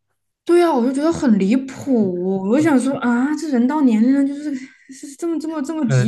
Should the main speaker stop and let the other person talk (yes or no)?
yes